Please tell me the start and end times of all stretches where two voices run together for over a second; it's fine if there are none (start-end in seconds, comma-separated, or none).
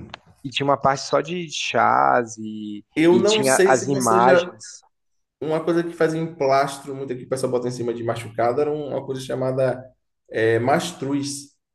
2.9-4.6